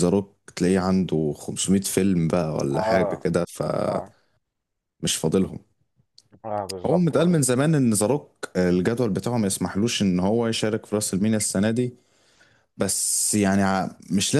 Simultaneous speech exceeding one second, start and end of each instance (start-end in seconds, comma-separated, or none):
none